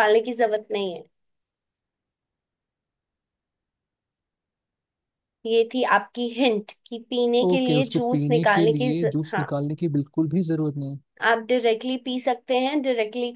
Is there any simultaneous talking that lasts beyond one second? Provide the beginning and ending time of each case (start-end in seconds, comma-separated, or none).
7.5-9.4